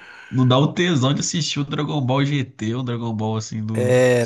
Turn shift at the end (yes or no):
yes